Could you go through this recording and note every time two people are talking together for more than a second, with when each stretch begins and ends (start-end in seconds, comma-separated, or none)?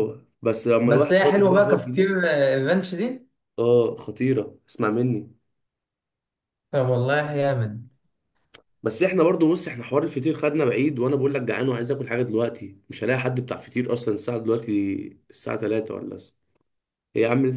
0.9-2.2